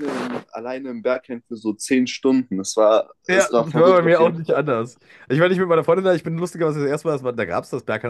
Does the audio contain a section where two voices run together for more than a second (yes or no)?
yes